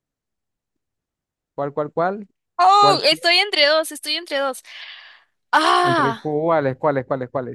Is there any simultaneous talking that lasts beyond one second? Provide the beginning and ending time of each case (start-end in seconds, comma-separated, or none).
none